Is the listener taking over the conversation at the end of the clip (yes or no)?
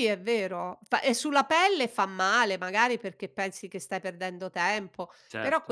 no